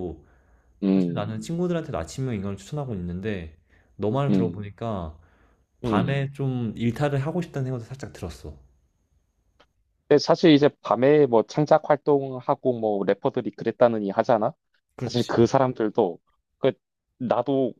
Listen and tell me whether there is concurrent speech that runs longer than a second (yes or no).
no